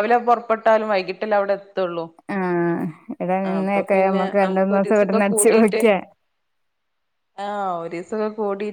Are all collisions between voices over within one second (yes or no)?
no